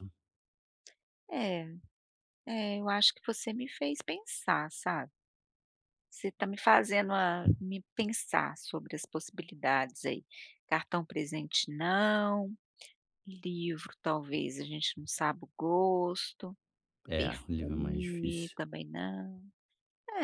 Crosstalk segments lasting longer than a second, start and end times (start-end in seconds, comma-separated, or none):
17.2-18.6